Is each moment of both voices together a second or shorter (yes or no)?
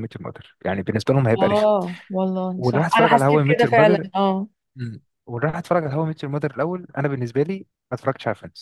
no